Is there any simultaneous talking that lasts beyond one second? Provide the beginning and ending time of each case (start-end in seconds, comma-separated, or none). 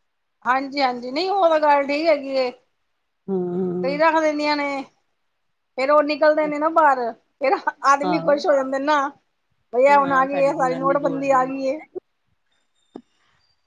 10.1-11.4